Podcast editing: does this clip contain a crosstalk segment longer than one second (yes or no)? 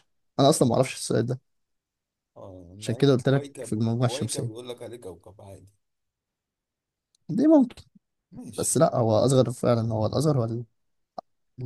yes